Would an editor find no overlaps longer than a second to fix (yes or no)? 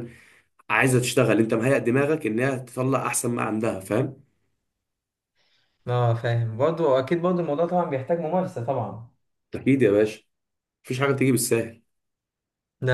yes